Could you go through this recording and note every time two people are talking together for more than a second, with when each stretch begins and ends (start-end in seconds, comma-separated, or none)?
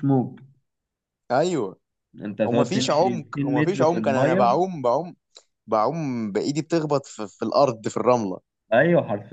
2.4-4.6